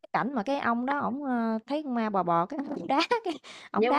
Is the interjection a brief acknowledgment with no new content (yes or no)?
no